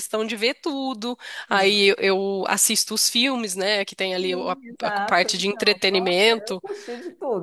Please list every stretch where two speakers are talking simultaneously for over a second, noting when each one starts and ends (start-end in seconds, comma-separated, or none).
4.2-6.6